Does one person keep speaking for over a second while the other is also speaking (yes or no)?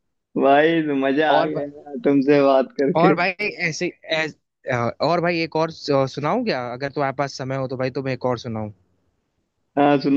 no